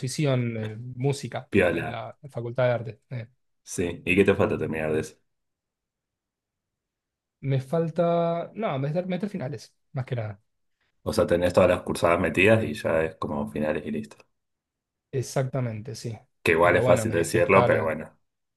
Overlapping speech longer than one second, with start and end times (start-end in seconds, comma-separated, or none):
16.6-17.9